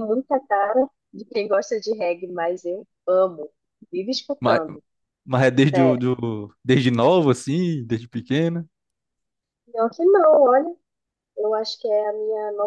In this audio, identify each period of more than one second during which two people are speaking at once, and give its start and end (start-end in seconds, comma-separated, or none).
none